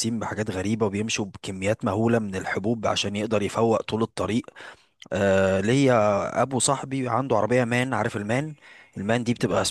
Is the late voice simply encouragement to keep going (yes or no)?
yes